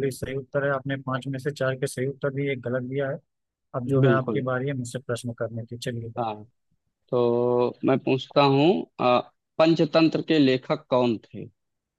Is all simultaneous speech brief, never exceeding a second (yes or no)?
yes